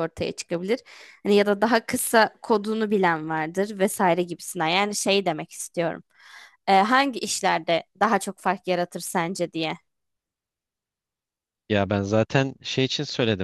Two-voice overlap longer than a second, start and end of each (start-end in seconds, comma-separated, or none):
none